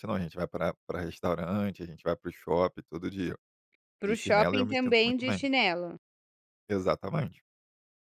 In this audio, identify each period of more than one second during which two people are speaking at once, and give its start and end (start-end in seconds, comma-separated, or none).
4.0-5.4